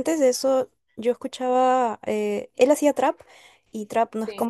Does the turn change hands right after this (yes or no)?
no